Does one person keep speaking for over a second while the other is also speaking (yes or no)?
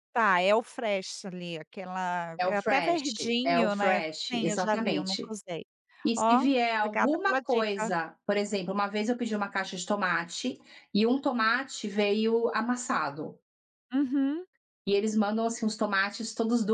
yes